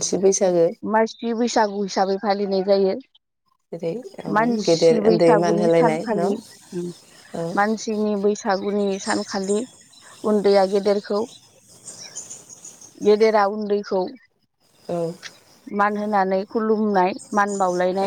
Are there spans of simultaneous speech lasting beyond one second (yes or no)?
yes